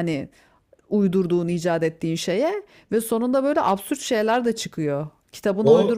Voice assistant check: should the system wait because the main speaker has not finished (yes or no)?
no